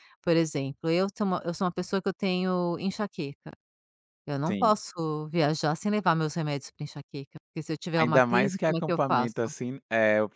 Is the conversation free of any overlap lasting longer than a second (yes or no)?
no